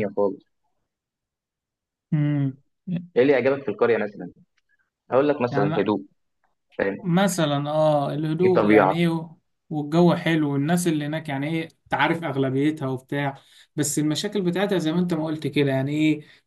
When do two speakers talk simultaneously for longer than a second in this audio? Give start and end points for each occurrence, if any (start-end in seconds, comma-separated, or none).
none